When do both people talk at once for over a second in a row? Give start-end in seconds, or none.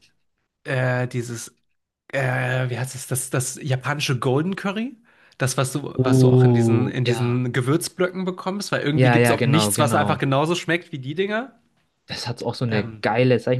5.9-7.4, 8.9-10.2